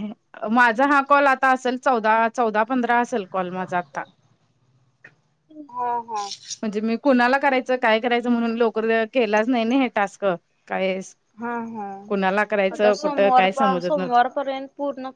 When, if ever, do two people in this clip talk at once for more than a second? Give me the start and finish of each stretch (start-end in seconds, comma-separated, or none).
12.8-14.3